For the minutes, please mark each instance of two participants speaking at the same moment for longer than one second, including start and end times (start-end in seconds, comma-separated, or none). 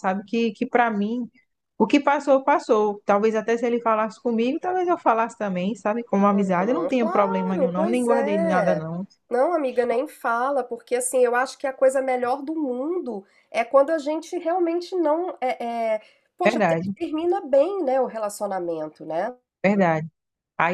6.3-8.8